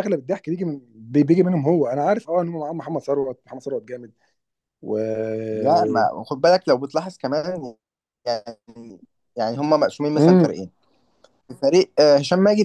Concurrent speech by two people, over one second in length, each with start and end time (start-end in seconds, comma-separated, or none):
none